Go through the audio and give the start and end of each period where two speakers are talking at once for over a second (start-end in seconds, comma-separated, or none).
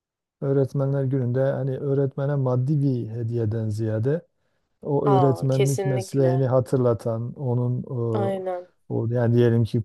5.1-6.3